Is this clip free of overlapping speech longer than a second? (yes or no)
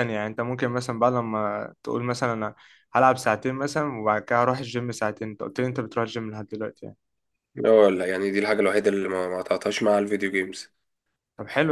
yes